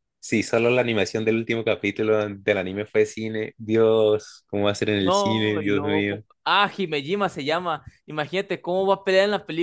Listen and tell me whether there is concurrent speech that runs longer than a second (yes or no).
yes